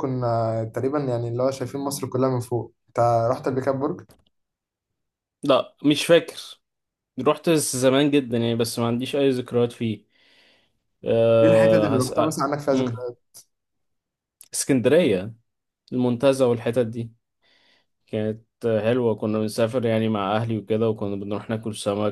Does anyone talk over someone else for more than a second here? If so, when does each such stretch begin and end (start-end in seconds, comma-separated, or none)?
11.4-13.0